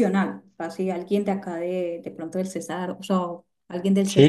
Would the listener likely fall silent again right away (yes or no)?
no